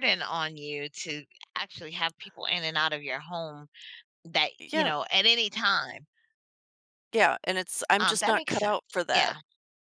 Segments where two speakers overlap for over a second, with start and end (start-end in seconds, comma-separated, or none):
8.0-9.3